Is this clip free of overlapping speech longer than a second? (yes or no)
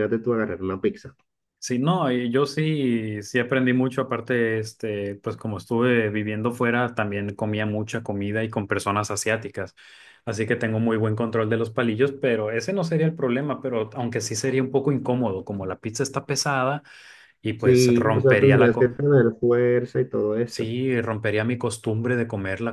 no